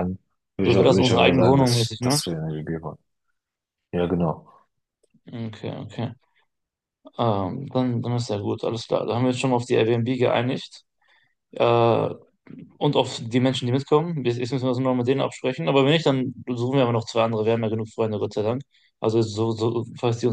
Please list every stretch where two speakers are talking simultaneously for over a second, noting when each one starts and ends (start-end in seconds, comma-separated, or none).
0.6-2.2